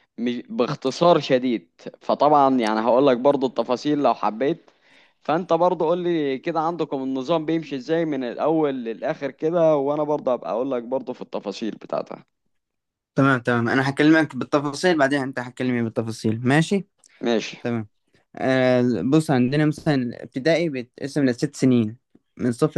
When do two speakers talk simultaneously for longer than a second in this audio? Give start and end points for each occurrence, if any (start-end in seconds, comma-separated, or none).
none